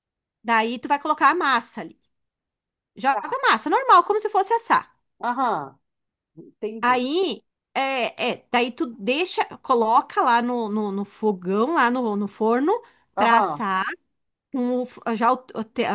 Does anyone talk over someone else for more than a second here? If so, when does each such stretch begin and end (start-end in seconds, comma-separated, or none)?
none